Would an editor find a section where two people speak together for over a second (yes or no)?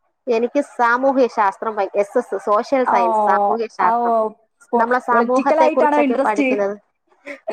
yes